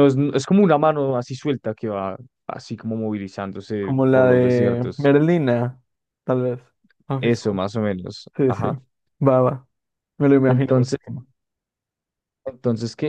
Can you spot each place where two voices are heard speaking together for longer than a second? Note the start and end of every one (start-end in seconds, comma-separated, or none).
3.8-5.1